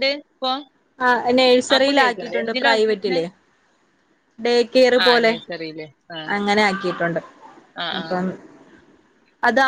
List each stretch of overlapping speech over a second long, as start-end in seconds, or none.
1.8-3.2